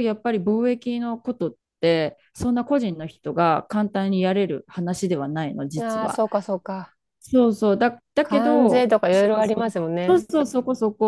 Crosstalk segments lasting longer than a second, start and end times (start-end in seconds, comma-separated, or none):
8.2-10.2